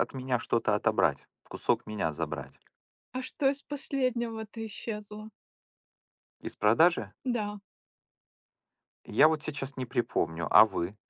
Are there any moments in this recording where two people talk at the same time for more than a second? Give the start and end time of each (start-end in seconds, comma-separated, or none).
none